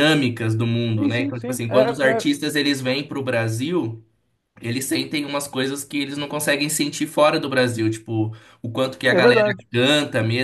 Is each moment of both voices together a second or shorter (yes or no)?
no